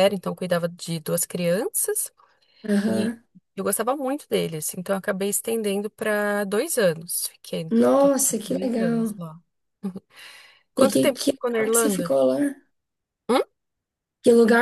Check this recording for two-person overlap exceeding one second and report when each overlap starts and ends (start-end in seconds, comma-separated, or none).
7.7-9.2, 10.8-12.2